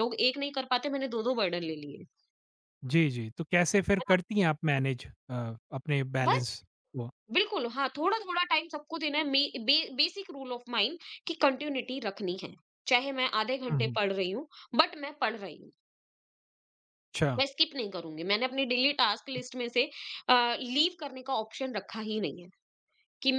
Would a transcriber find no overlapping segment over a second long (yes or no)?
yes